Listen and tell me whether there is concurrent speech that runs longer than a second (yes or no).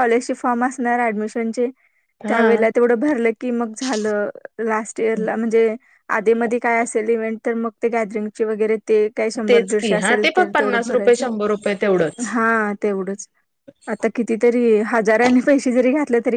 yes